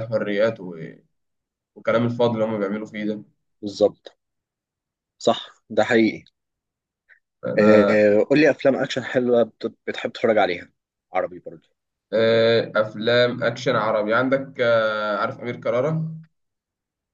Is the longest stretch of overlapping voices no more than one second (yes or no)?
yes